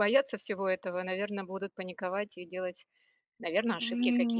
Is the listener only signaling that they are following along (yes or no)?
no